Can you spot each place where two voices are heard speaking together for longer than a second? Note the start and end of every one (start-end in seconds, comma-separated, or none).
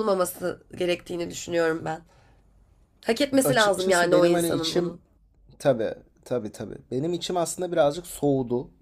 3.4-5.0